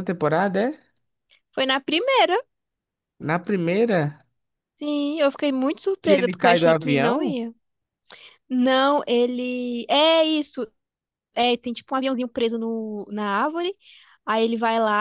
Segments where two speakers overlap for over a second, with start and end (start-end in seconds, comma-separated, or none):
6.0-7.4